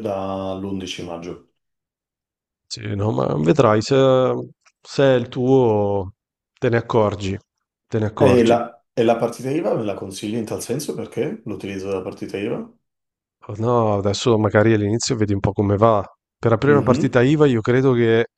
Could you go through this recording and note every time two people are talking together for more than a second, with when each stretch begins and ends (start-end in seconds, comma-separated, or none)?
none